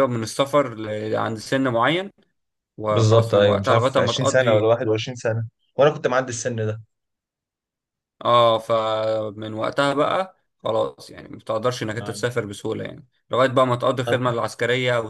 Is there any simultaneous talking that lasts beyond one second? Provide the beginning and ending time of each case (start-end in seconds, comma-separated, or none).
2.9-4.7